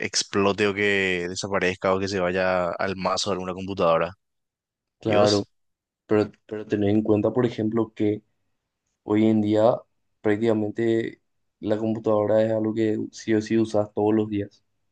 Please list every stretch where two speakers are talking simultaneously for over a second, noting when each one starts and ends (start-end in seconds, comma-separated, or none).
none